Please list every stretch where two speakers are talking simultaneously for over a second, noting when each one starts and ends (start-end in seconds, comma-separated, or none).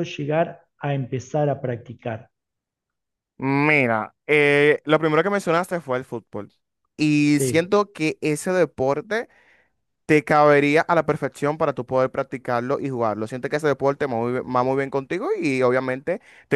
none